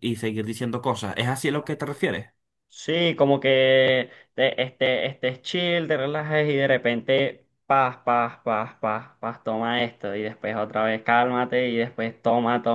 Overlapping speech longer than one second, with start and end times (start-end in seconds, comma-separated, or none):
none